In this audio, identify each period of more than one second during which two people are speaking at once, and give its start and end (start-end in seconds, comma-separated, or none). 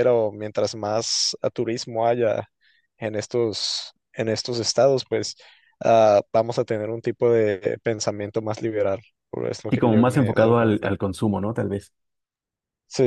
9.7-10.9